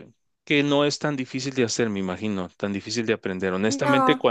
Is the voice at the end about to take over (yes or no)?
no